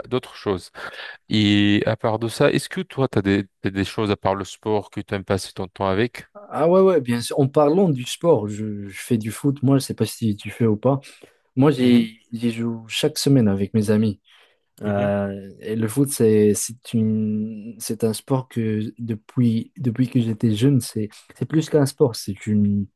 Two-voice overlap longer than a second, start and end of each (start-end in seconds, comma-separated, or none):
none